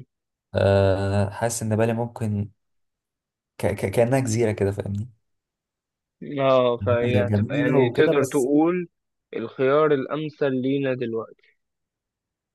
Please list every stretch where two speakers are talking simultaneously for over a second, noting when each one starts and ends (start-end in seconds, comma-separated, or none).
7.0-8.5